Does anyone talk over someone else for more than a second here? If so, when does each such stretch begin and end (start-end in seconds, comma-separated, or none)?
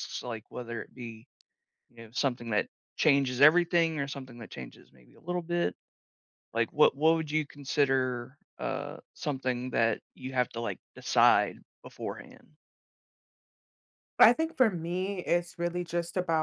none